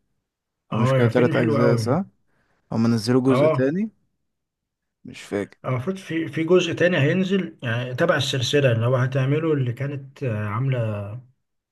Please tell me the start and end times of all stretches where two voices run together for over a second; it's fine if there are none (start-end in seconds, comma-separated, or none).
0.7-2.0